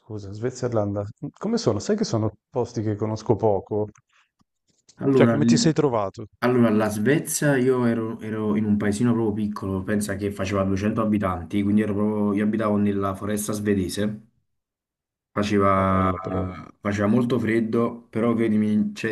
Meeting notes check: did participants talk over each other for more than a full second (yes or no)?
no